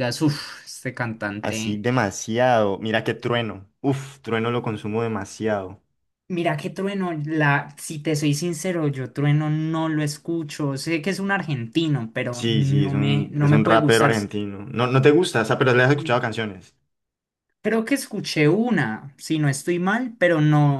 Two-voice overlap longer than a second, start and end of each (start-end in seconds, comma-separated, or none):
12.3-14.3